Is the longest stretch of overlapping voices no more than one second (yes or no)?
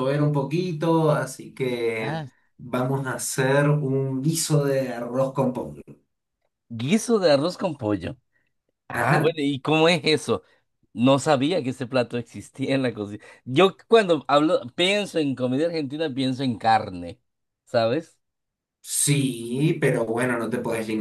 yes